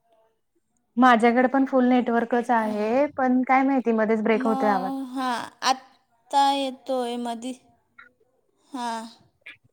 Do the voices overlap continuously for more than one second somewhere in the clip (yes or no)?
no